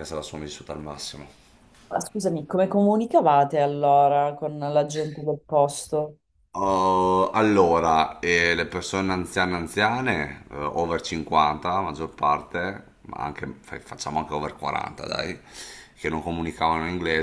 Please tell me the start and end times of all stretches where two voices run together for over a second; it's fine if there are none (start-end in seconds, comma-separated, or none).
none